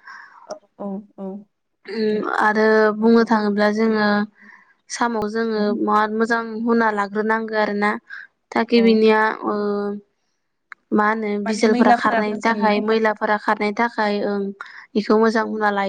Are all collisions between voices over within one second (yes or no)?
no